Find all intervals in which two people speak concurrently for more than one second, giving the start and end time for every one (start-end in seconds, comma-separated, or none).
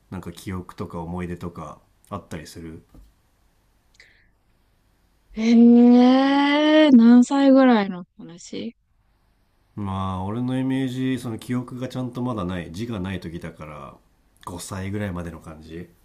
none